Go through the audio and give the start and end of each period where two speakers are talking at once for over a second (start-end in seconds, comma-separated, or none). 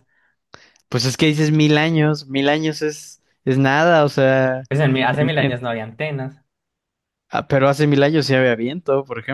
none